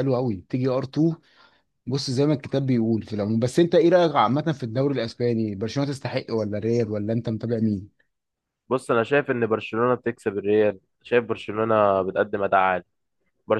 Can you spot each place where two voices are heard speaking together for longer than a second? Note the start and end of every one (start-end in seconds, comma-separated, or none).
none